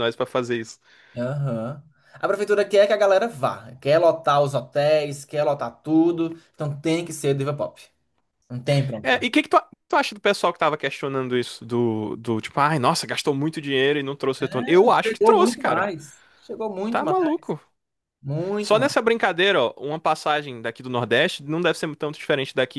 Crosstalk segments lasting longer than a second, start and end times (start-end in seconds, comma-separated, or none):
14.6-15.9